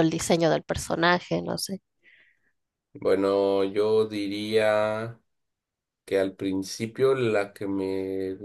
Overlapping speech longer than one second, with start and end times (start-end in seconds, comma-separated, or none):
none